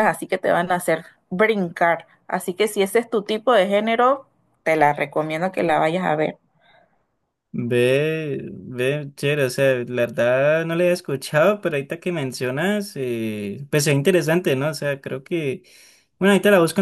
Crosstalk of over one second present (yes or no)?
no